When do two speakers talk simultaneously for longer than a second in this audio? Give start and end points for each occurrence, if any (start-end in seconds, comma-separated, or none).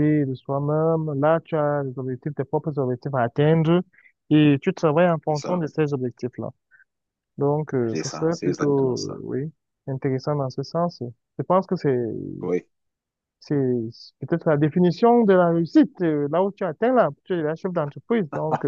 7.9-9.2